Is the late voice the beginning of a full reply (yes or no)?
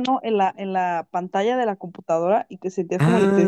yes